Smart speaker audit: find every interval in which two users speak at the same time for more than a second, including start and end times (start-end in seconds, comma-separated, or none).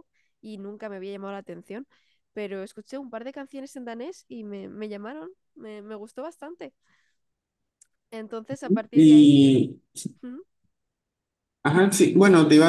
none